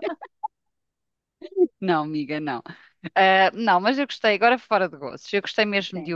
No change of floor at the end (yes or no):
yes